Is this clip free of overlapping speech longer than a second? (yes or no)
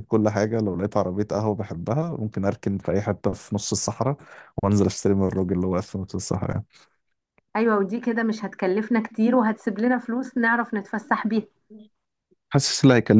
yes